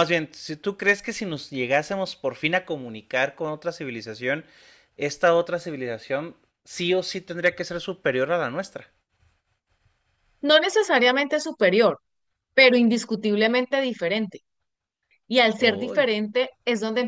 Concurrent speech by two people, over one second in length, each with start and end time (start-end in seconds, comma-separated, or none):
none